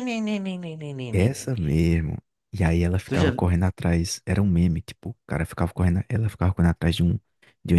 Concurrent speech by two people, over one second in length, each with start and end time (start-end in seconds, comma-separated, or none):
none